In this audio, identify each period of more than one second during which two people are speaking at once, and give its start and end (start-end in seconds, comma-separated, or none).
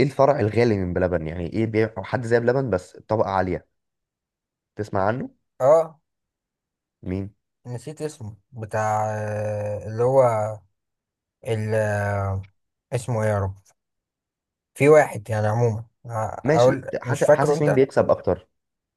16.5-17.8